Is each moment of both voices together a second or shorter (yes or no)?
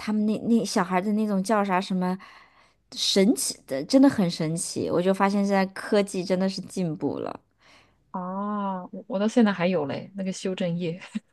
yes